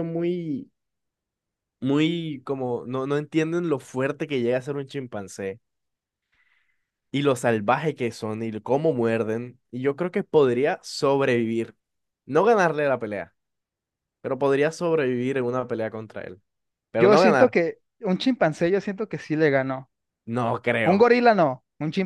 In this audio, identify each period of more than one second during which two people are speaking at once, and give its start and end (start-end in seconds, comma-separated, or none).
none